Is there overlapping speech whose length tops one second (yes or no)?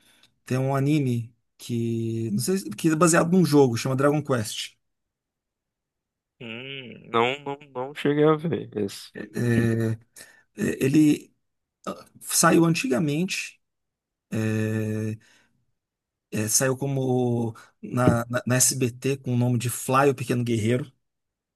no